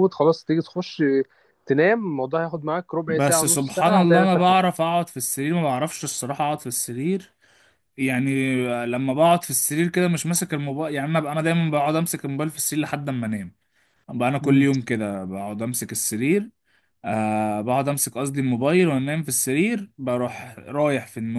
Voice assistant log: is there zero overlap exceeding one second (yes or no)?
no